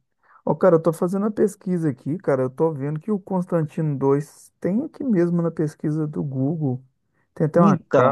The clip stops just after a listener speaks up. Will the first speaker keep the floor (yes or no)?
yes